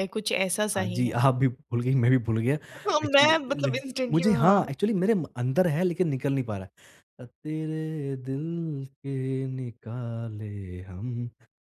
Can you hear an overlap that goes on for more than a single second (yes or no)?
yes